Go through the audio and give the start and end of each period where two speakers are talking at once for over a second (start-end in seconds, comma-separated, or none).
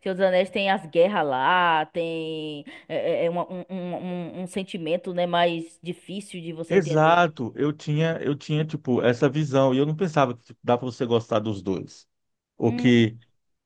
none